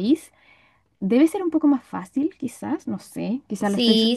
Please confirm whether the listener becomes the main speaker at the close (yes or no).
yes